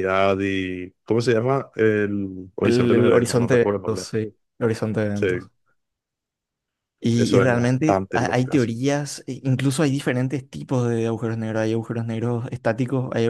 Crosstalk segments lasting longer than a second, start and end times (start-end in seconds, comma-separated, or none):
2.6-4.1, 7.1-8.5